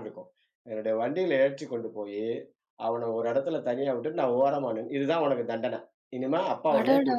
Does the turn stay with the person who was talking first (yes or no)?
yes